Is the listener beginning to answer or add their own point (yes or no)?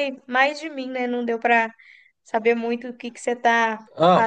yes